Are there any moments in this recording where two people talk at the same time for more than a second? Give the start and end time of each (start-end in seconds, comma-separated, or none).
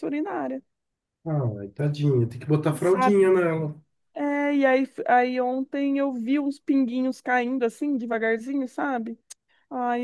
none